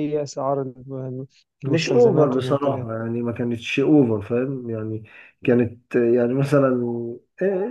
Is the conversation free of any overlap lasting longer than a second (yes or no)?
no